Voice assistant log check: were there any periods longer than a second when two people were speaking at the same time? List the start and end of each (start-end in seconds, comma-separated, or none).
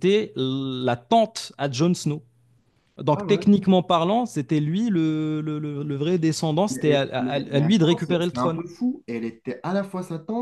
6.7-8.6